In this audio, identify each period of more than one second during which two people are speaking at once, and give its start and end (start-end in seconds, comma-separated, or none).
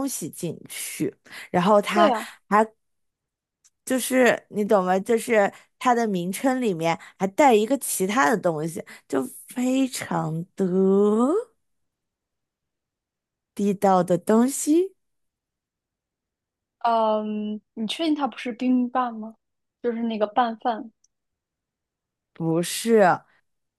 none